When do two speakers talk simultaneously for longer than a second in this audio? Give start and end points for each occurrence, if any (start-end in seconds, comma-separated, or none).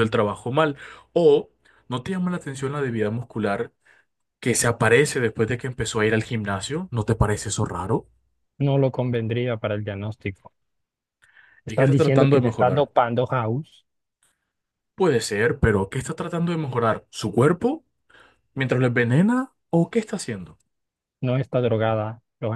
11.7-12.9